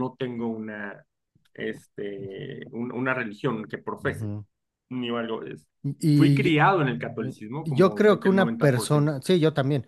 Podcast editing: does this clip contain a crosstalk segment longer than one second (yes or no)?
yes